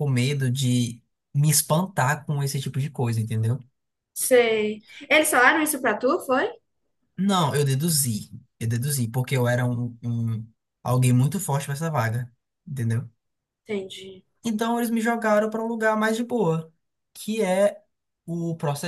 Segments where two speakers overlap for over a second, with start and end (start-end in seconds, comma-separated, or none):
none